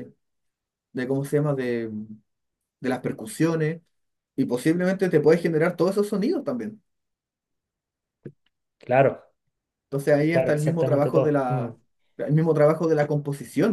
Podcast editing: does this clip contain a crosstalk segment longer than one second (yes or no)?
yes